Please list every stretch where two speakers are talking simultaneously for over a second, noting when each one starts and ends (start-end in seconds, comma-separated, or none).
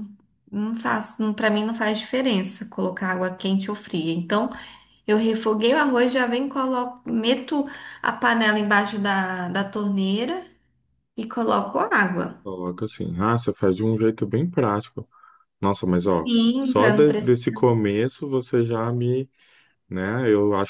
16.1-17.4